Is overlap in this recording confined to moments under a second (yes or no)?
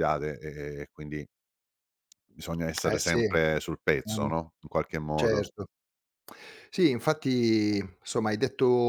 yes